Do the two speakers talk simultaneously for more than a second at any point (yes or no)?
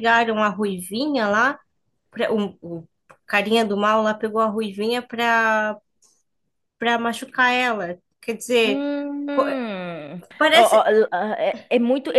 no